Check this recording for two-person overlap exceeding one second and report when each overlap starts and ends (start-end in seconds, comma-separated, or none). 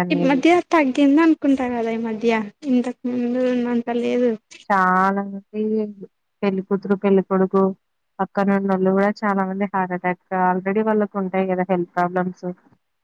none